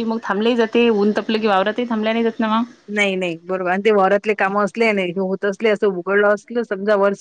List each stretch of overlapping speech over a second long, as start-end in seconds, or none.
none